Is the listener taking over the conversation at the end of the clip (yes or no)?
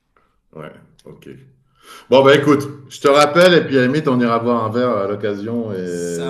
no